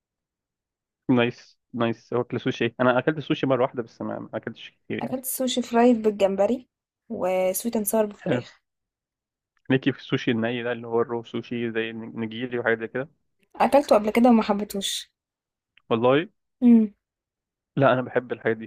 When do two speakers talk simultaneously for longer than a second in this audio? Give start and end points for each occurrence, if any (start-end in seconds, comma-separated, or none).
none